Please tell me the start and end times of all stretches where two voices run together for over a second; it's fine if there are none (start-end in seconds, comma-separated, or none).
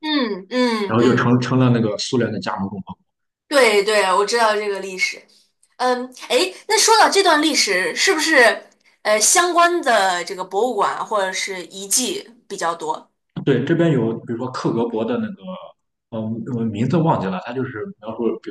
none